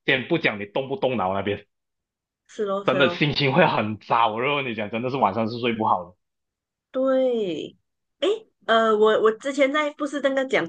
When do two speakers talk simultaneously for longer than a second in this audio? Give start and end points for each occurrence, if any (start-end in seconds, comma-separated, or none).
none